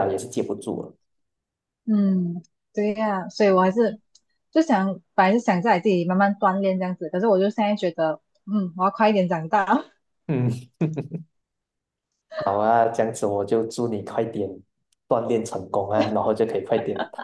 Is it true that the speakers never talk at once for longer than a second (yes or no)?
yes